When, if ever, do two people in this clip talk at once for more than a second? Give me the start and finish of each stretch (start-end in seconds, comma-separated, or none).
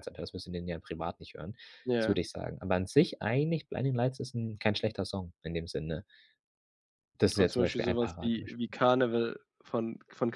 7.4-8.7